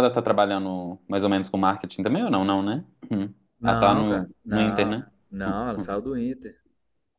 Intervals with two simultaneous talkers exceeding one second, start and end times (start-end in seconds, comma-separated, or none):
3.6-5.9